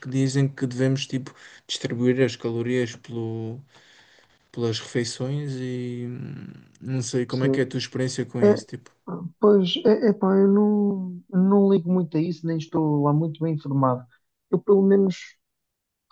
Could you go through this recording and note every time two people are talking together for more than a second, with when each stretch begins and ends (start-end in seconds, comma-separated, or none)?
none